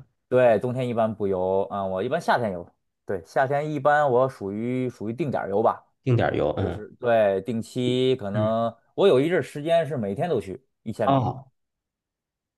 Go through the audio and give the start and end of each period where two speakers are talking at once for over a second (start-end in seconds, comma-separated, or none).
none